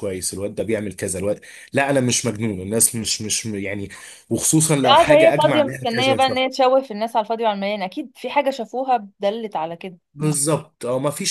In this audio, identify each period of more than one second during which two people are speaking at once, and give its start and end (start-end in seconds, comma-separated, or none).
4.8-6.3